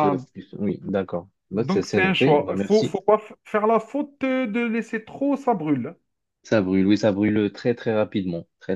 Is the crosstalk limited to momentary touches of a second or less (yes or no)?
no